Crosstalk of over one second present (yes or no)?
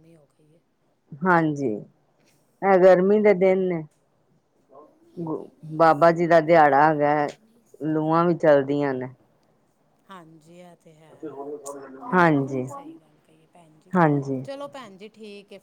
no